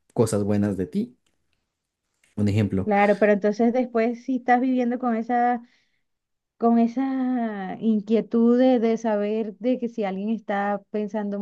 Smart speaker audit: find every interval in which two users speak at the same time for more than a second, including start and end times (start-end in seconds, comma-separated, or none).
none